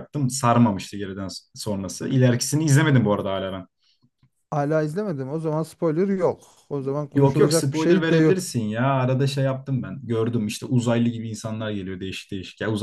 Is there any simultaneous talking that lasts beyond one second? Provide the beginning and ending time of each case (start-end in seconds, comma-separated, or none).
7.1-8.4